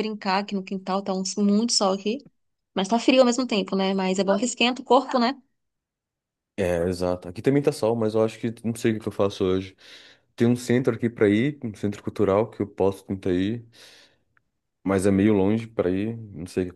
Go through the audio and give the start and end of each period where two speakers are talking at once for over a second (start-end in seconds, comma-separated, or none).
none